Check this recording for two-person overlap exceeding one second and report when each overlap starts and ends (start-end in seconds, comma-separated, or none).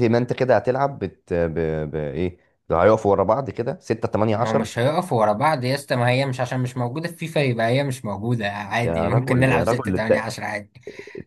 8.8-10.3